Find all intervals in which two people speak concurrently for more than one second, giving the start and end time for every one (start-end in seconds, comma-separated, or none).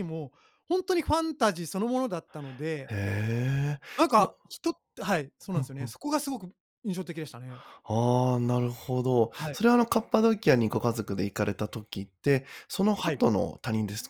none